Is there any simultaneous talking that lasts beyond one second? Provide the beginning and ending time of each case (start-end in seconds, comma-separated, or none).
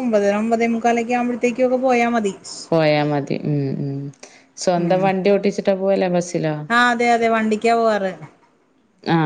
none